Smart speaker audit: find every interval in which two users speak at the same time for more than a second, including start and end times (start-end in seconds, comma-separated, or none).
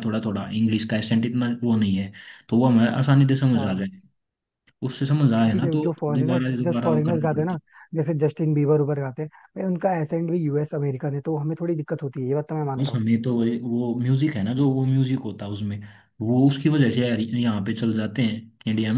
5.3-7.6